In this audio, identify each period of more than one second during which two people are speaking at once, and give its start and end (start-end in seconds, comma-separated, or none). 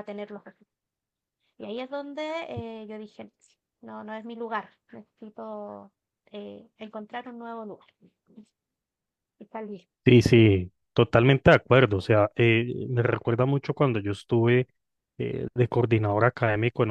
none